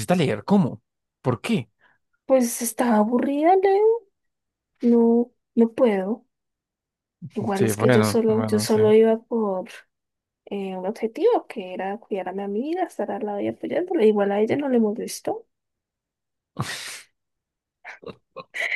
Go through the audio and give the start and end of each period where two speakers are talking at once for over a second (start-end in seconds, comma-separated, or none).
7.5-8.8